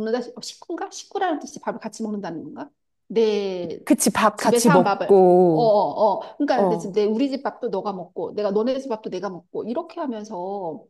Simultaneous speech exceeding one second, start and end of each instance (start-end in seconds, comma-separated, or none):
4.3-5.7